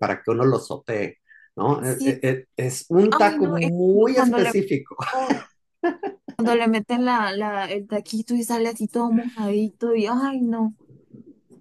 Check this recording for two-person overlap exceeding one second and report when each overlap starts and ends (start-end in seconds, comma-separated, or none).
3.1-4.5